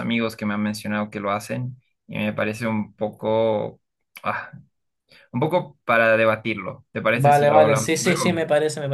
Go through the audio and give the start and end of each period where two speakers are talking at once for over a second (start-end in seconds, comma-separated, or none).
7.1-8.4